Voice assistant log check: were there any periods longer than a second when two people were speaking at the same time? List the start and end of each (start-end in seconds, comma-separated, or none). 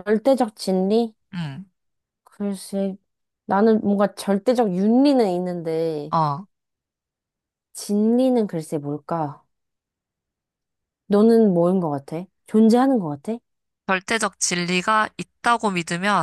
none